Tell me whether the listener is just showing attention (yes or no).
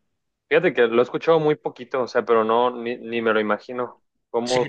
no